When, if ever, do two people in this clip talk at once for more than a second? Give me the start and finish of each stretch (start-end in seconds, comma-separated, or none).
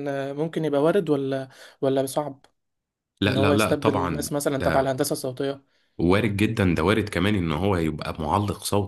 3.3-5.0